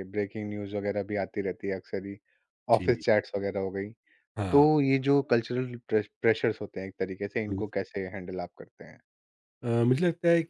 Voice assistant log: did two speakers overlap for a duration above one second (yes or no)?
no